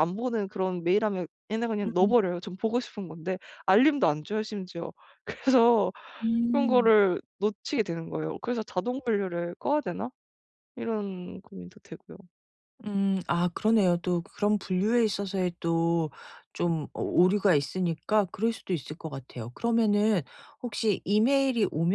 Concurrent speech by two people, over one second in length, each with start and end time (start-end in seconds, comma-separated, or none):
none